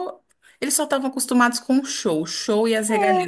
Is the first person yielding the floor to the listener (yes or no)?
no